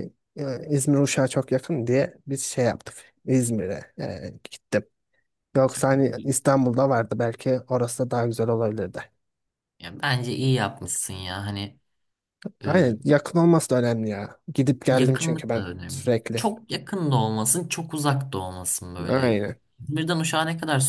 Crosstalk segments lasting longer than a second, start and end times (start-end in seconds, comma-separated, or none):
14.9-16.5